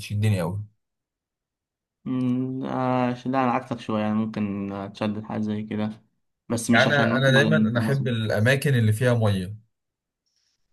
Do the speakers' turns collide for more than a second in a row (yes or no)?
yes